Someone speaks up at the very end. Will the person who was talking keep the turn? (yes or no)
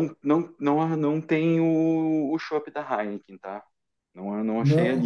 yes